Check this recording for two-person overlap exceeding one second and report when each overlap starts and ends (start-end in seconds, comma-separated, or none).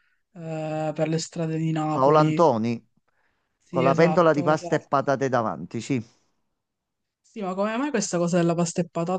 3.7-4.9